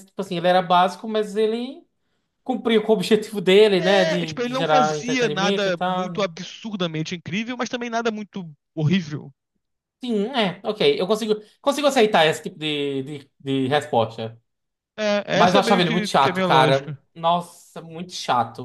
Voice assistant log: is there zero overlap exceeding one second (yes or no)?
no